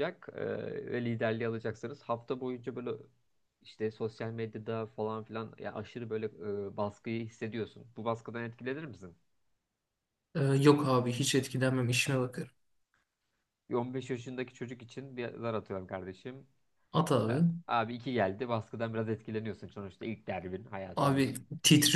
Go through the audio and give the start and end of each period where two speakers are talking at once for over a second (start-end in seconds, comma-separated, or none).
none